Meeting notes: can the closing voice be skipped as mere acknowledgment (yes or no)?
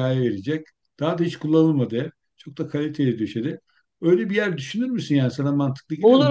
no